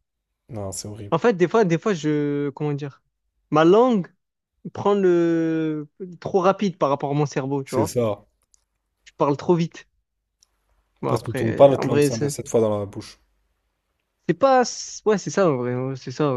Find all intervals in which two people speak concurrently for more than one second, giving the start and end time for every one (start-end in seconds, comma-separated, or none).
11.1-12.3